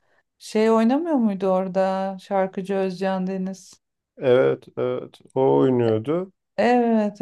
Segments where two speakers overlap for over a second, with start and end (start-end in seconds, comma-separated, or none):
none